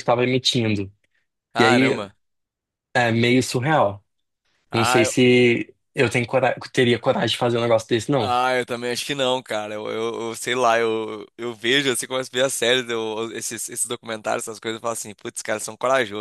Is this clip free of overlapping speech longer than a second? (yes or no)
yes